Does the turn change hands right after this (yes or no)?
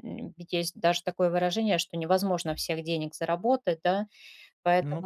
no